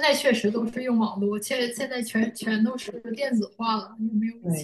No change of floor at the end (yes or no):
no